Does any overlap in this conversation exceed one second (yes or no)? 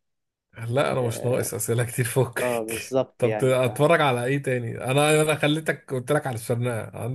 yes